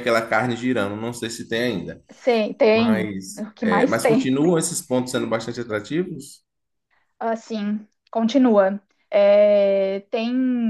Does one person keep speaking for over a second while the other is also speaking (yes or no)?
yes